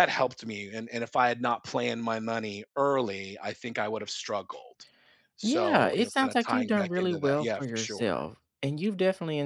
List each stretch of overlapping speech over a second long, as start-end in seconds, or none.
5.4-8.1